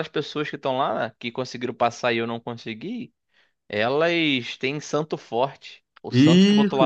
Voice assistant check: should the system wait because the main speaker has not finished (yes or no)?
no